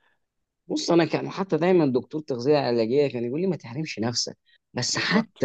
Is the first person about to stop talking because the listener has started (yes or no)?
no